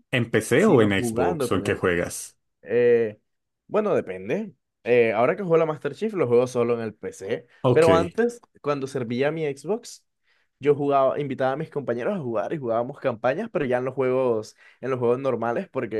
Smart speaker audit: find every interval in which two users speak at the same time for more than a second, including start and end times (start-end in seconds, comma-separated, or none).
0.5-1.8